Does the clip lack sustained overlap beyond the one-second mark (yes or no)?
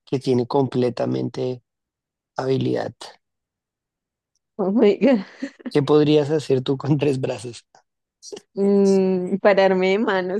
yes